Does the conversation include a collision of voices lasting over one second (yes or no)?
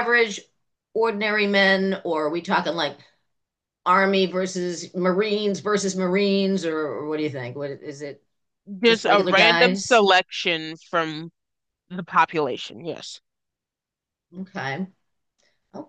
yes